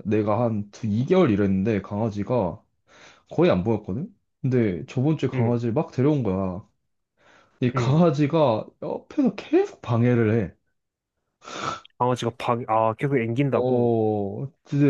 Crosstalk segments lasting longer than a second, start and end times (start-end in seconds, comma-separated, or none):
none